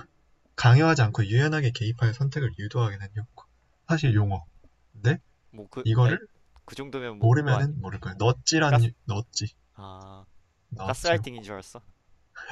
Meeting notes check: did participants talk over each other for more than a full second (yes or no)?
no